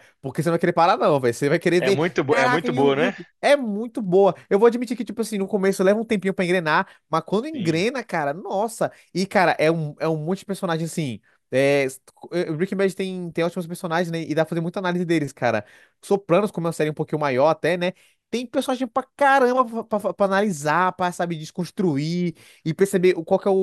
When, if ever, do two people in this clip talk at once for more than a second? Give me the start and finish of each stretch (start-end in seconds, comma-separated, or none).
1.8-3.2